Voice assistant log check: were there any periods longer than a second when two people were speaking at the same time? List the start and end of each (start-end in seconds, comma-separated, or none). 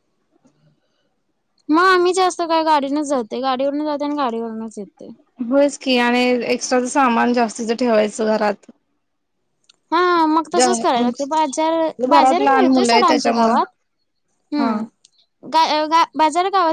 12.1-13.6